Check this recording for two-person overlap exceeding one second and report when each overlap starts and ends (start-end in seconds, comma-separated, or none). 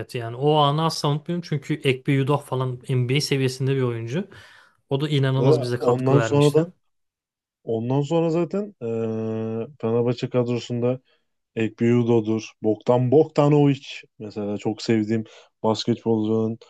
5.4-6.7